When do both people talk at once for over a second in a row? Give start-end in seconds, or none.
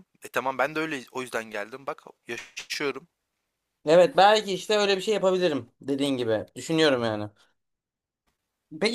none